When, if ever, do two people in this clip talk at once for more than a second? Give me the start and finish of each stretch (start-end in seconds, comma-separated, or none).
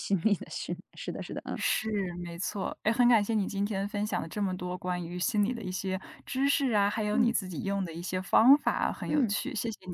none